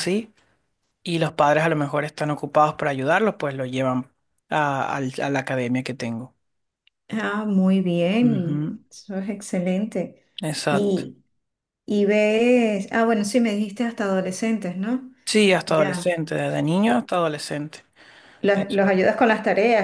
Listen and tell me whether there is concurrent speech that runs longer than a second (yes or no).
no